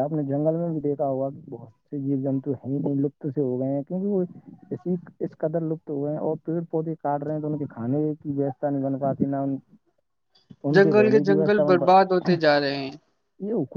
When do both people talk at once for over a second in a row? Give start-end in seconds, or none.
10.8-12.3